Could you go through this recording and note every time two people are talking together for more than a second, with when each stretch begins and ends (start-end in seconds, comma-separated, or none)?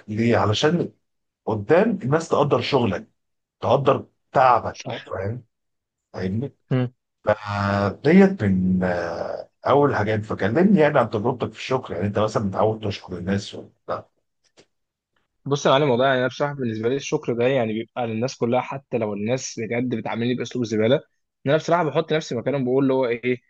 none